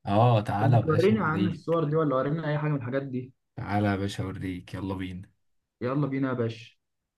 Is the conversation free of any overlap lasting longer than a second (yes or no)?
no